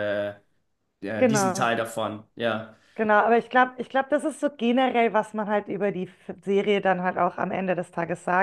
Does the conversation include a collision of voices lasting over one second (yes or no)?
no